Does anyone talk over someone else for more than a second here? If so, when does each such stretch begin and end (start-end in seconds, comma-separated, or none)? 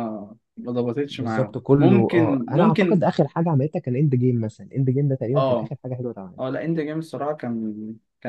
1.1-3.0